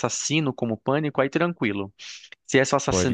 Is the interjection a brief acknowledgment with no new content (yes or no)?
yes